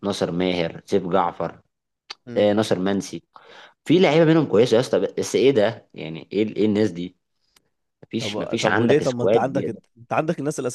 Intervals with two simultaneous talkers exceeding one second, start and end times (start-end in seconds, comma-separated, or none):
8.2-9.8